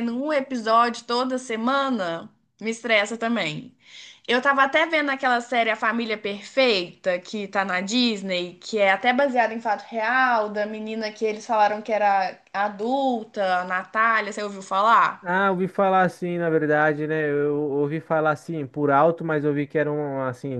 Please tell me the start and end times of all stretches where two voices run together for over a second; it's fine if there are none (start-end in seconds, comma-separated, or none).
none